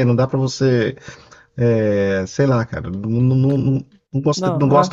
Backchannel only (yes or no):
yes